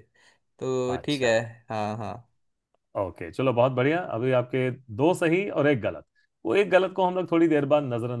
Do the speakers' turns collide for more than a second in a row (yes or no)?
no